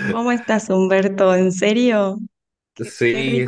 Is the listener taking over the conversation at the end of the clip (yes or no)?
yes